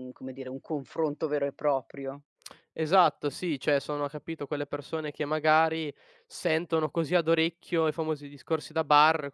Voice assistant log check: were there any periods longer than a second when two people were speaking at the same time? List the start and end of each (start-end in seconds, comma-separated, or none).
none